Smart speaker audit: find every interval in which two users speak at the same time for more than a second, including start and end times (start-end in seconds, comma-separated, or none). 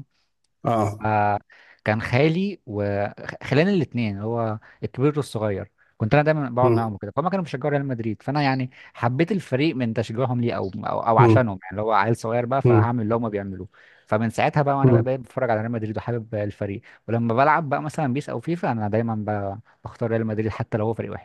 none